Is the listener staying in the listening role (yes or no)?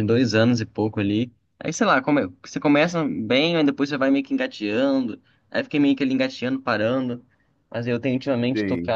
yes